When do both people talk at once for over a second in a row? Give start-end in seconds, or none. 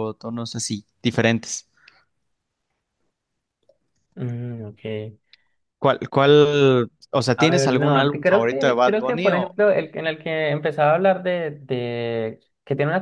7.3-9.6